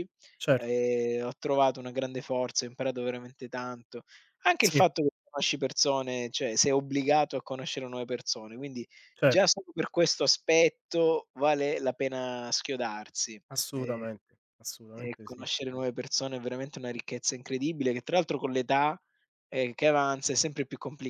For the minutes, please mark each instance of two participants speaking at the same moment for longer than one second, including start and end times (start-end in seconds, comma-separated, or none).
none